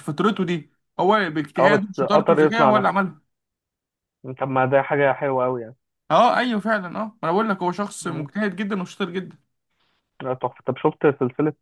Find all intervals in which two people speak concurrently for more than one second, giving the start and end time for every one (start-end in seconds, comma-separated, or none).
1.6-2.9